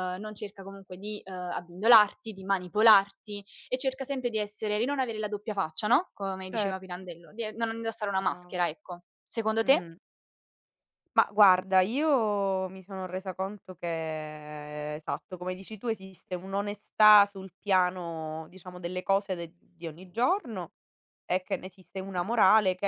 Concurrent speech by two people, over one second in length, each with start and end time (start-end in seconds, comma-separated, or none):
none